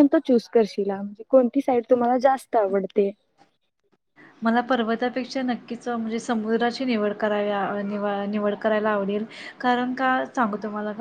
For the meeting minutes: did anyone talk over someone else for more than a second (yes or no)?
no